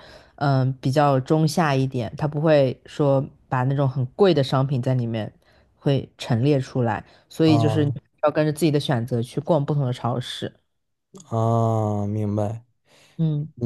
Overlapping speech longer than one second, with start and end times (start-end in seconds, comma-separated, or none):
none